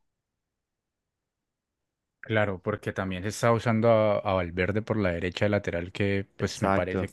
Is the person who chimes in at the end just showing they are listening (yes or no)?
yes